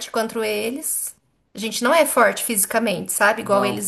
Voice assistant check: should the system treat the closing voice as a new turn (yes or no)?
no